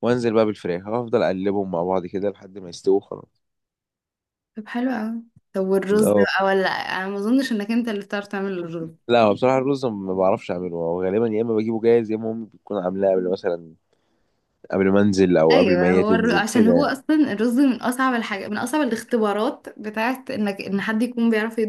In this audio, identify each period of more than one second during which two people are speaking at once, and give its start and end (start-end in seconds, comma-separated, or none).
15.5-16.9